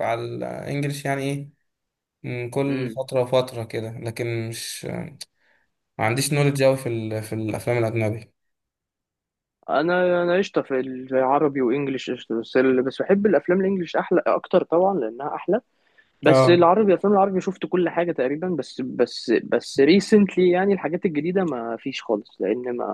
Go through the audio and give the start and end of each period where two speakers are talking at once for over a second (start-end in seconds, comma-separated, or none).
none